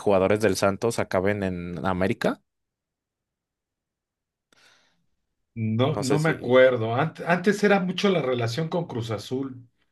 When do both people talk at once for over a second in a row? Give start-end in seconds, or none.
none